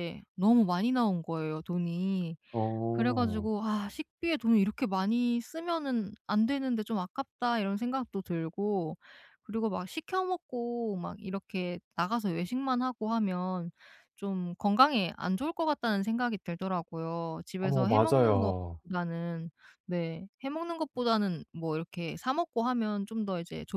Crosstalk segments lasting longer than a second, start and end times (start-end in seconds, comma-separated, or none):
17.6-18.8